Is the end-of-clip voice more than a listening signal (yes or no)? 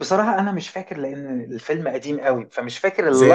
yes